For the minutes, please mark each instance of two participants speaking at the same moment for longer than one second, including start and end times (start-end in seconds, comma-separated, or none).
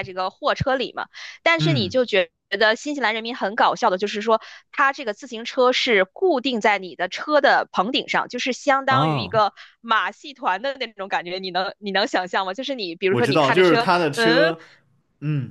13.1-14.6